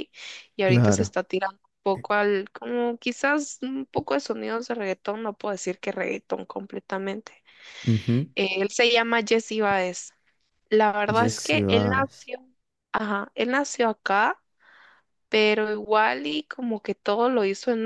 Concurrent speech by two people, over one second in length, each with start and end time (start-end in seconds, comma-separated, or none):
11.1-12.3